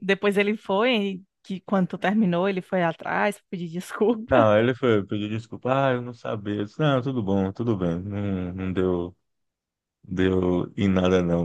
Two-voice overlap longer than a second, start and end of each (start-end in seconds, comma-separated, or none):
none